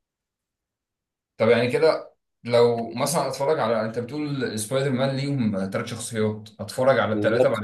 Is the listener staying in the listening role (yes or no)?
yes